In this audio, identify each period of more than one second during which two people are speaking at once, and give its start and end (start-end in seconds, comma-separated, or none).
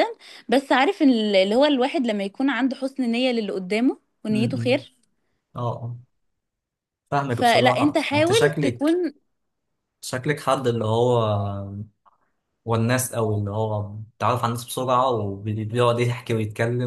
7.3-9.0